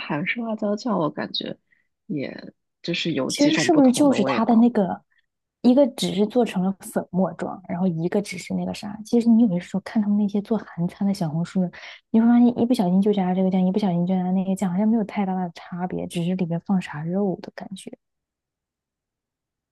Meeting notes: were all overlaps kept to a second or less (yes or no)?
no